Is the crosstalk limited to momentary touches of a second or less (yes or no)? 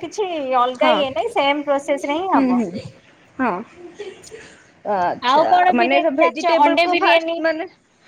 no